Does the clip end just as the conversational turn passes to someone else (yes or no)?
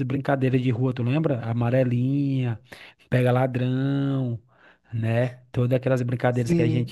yes